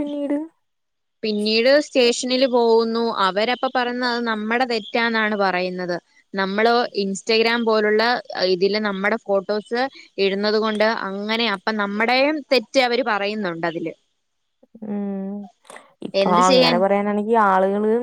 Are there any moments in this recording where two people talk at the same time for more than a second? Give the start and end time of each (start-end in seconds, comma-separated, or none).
none